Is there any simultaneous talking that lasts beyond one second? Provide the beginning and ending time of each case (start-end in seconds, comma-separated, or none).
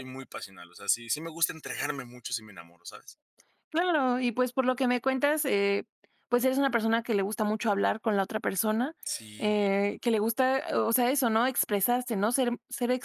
none